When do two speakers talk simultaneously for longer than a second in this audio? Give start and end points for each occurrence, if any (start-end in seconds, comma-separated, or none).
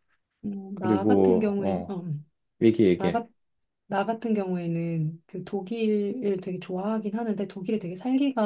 0.7-1.9